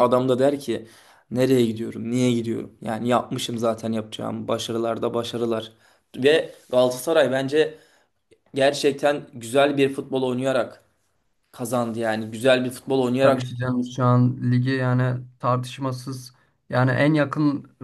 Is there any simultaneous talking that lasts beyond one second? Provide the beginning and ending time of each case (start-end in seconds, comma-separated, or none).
none